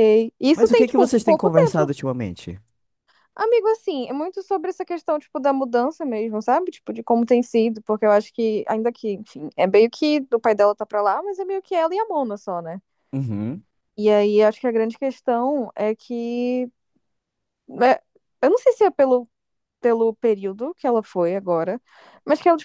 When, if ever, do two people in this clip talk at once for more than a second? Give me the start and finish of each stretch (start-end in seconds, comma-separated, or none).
0.5-1.9